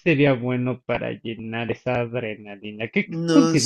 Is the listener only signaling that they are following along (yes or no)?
yes